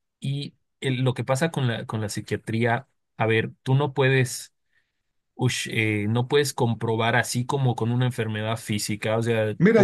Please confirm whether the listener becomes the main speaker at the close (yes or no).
yes